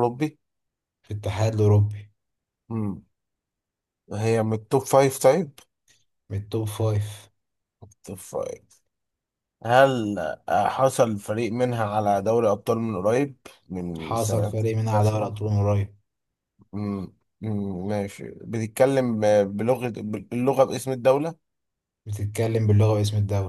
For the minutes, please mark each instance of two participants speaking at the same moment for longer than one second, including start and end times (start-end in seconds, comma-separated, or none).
14.0-15.3